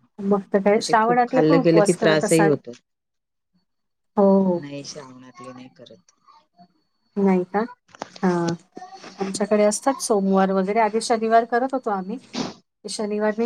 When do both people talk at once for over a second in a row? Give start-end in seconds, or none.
0.7-2.5